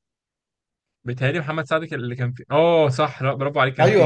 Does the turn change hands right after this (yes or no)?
yes